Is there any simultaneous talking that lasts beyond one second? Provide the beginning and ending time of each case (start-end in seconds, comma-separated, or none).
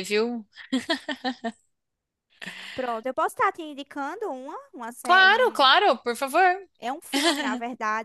none